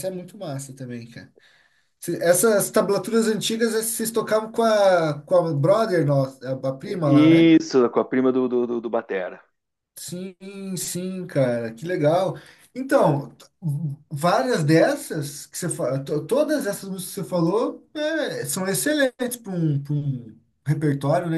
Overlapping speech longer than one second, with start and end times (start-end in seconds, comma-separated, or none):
none